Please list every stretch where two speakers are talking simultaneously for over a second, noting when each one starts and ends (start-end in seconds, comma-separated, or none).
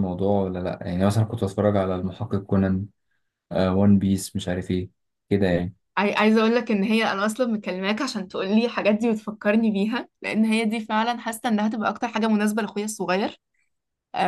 none